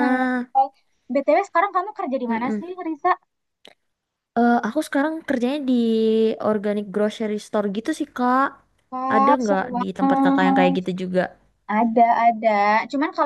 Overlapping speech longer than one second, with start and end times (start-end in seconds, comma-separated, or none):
9.1-10.8